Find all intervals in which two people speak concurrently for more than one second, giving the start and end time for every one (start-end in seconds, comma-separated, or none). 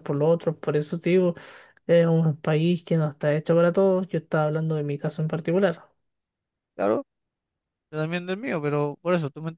none